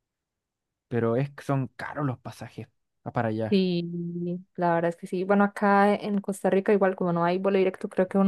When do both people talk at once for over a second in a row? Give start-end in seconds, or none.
none